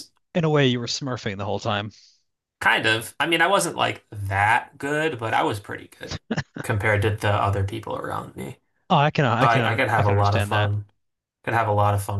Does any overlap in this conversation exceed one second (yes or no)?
yes